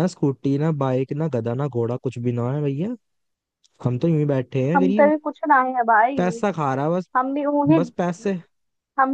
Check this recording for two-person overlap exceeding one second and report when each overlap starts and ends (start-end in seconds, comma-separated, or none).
none